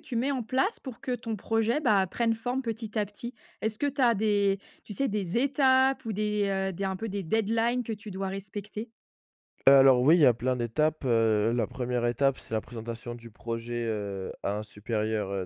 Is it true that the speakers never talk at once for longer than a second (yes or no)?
yes